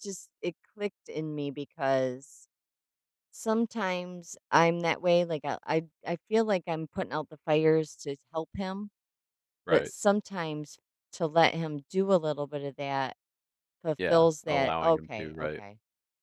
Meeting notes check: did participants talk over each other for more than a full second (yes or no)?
yes